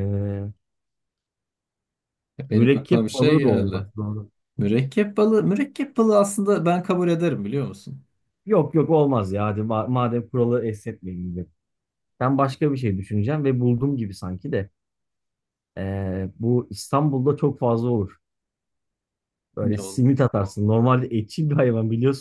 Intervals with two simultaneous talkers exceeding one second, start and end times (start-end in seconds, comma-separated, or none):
2.5-3.9